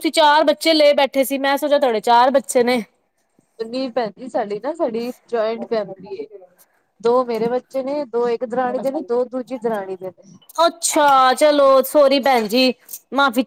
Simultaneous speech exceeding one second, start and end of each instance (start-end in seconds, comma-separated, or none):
none